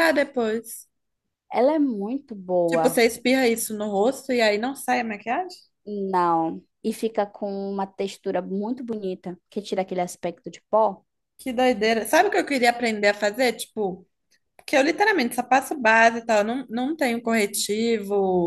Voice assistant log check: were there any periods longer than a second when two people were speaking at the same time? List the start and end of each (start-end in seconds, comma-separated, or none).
none